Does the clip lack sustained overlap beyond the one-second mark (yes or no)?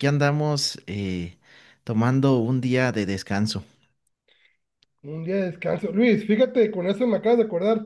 yes